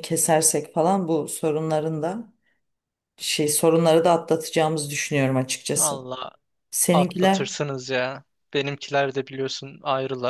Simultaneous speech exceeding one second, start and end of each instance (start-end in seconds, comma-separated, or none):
none